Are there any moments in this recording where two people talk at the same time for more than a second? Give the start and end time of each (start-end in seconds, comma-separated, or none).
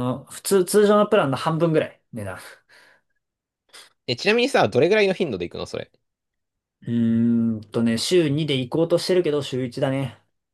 none